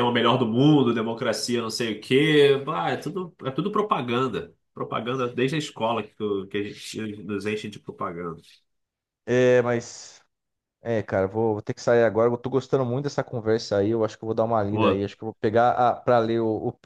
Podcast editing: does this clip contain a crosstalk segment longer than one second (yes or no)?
no